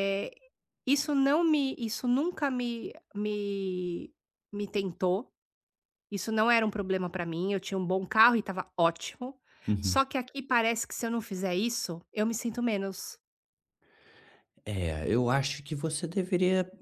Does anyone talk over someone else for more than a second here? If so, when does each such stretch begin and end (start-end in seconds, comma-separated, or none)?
none